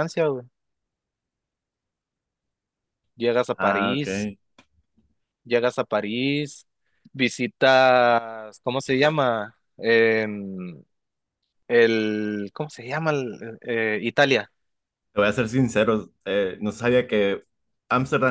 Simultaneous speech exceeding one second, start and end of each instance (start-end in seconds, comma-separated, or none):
none